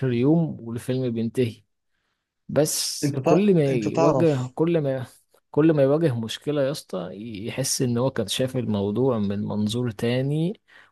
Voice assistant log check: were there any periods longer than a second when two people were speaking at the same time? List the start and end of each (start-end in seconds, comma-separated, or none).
3.0-4.5